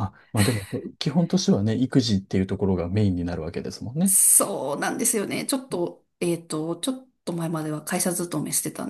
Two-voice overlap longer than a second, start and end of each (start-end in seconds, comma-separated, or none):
none